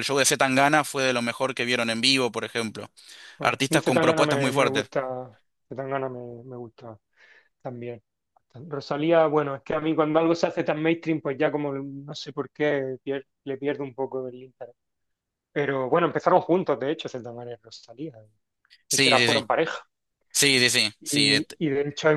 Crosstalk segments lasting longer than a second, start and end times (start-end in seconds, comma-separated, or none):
3.4-4.9